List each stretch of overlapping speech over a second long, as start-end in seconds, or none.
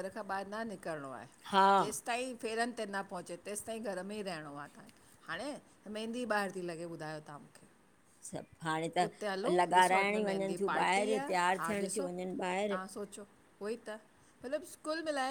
9.6-11.3